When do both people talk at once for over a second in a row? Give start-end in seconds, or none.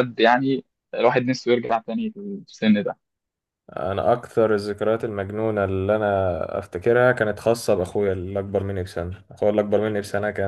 none